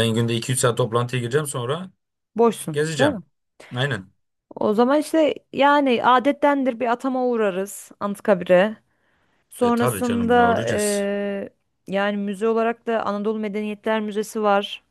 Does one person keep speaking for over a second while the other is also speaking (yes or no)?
yes